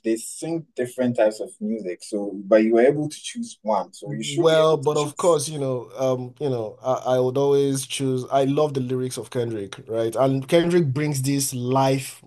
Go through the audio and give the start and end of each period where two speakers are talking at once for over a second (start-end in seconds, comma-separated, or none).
4.1-5.4